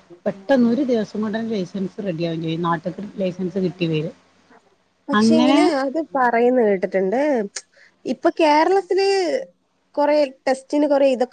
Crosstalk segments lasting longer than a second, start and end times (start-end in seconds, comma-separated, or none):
none